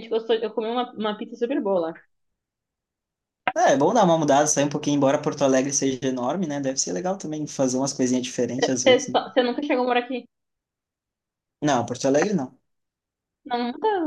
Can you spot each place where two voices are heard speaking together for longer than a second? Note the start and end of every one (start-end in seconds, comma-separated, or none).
none